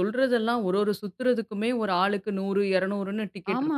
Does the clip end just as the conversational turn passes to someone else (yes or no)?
yes